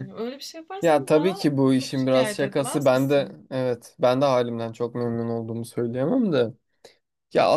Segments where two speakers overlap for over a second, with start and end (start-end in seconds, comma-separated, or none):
0.8-3.4